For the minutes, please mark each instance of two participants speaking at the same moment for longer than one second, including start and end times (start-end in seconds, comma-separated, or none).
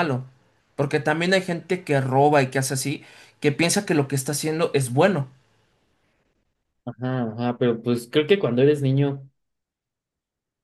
none